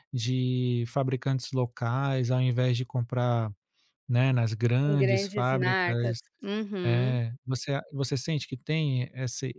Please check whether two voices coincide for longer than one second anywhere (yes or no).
yes